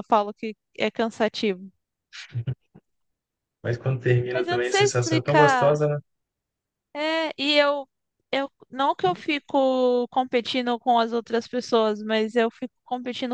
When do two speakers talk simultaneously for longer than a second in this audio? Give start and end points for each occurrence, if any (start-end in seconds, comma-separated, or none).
4.3-5.8